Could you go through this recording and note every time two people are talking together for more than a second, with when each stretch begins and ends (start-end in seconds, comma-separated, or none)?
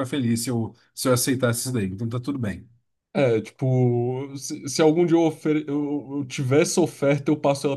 none